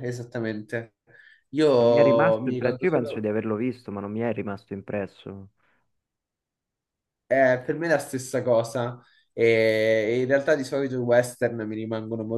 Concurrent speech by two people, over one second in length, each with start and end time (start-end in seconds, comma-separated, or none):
1.8-3.3